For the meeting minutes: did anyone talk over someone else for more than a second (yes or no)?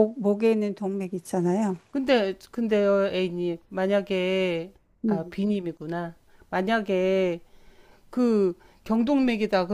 no